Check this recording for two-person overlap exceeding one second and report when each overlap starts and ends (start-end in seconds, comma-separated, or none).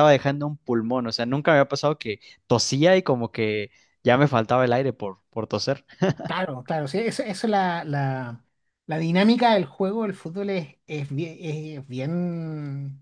none